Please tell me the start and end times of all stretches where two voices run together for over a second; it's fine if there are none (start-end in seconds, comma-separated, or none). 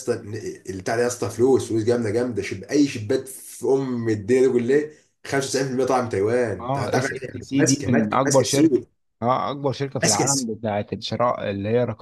6.6-8.8